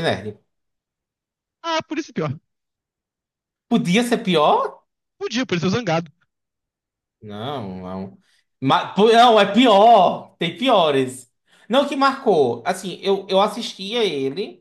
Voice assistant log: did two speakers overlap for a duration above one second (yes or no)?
no